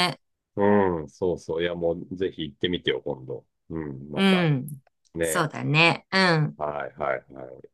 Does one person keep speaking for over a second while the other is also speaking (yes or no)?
no